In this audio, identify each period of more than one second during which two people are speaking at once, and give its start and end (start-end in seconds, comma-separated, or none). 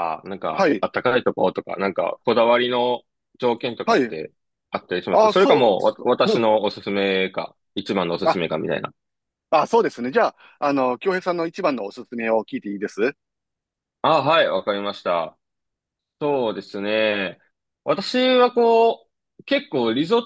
5.1-6.5